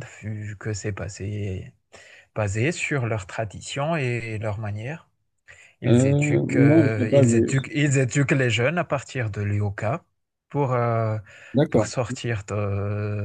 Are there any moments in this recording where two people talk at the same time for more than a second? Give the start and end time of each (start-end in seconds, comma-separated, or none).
5.8-7.5